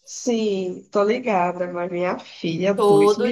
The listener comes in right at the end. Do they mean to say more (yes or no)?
yes